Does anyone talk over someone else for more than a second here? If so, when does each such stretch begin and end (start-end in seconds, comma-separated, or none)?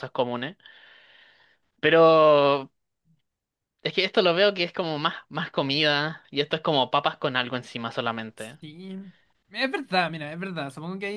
none